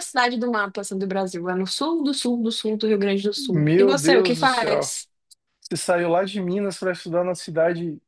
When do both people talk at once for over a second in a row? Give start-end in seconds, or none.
3.4-4.9